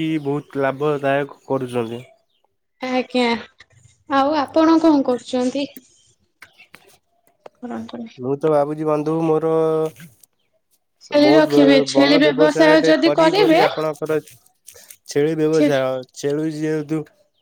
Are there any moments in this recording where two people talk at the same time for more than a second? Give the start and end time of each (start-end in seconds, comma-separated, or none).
11.3-13.6